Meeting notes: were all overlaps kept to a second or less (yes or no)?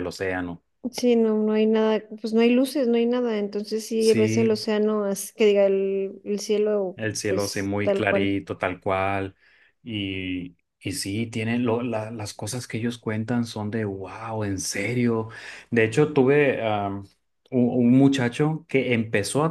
no